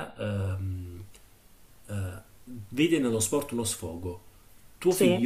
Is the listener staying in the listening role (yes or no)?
yes